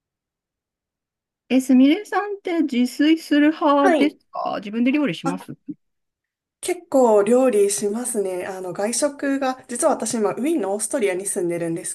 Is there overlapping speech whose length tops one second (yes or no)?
no